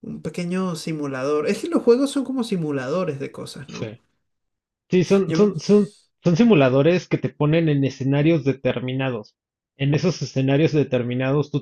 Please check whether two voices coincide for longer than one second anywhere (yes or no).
no